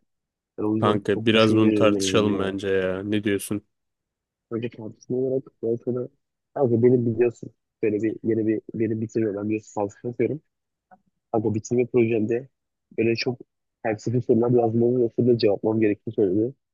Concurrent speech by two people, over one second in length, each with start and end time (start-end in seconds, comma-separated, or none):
0.8-2.6